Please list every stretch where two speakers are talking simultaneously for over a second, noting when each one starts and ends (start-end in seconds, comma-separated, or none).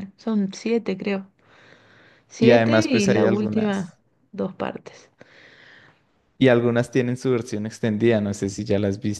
2.4-4.0